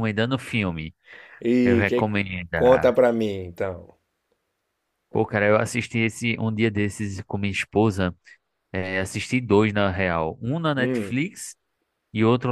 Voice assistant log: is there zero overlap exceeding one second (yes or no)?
yes